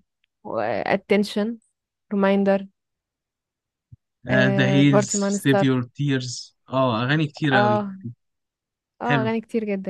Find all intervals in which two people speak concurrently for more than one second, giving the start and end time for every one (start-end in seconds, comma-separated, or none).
4.3-5.7